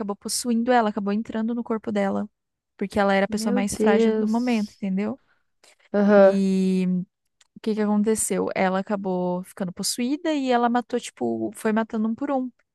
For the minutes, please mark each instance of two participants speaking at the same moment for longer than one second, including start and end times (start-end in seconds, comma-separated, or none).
3.3-4.8